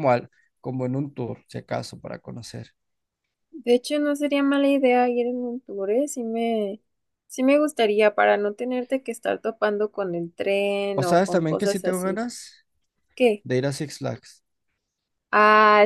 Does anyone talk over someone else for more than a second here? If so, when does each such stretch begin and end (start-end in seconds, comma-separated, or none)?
10.9-12.2